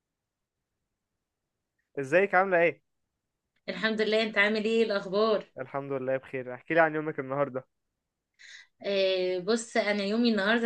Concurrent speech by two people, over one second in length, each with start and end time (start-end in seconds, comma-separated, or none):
none